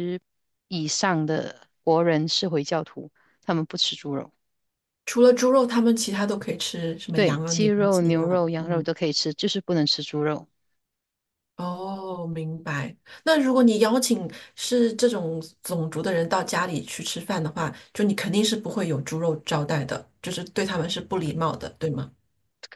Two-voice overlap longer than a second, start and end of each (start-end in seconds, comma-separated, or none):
7.1-8.9